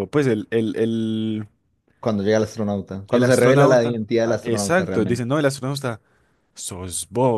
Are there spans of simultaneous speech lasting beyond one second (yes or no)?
yes